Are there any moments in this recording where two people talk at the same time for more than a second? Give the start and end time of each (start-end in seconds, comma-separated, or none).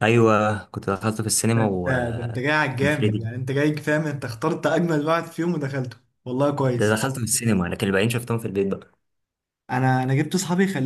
1.5-3.3